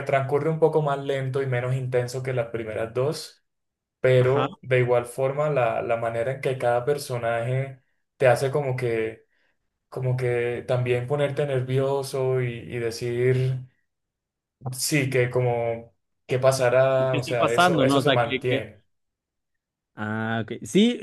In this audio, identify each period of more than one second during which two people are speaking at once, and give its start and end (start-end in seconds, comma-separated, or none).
17.1-18.6